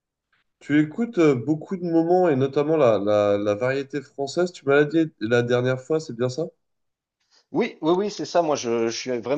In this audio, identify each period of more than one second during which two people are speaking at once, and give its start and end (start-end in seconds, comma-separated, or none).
none